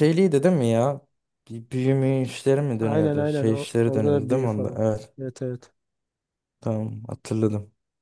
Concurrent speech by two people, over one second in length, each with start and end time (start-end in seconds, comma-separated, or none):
2.8-4.8